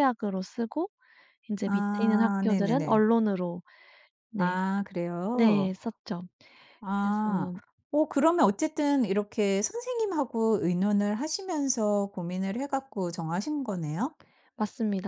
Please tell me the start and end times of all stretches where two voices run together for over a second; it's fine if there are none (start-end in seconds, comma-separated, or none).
1.7-3.0